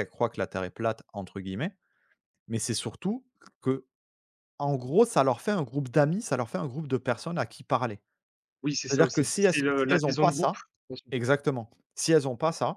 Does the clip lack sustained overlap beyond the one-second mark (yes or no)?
no